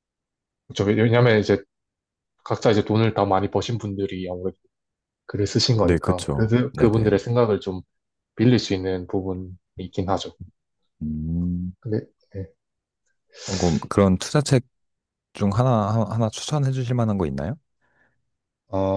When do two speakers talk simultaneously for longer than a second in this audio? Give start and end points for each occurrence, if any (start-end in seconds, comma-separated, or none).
5.8-7.2